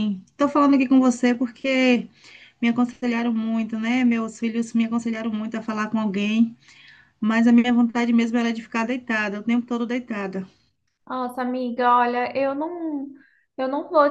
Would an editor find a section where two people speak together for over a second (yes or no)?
no